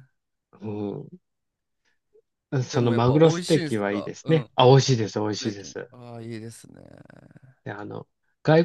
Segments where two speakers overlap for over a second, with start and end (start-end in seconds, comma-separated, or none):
2.7-4.5